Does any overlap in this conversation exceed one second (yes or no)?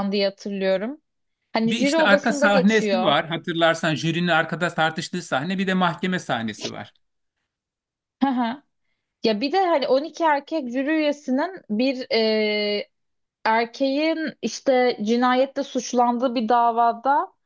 yes